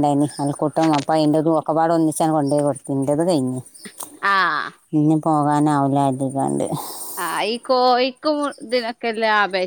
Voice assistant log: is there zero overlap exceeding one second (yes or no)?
yes